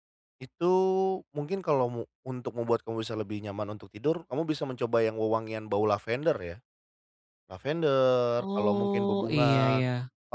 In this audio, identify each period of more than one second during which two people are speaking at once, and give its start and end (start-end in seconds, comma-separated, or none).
8.4-9.8